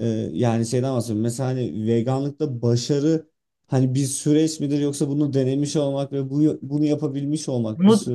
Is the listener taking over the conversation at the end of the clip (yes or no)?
yes